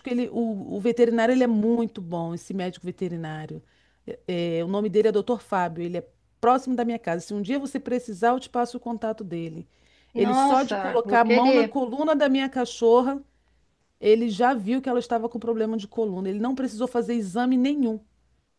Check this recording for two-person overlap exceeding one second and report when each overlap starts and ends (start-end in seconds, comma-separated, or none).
10.1-11.8